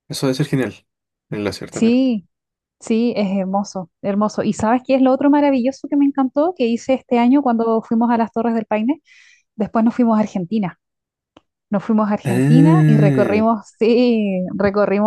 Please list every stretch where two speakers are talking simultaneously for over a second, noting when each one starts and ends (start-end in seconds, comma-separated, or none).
12.2-13.4